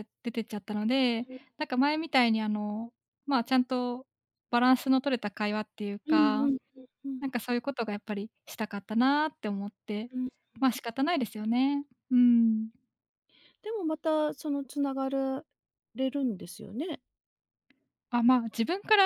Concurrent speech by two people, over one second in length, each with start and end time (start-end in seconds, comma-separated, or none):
none